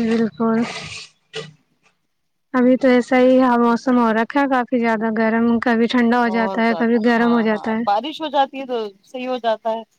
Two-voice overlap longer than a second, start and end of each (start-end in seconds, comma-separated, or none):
none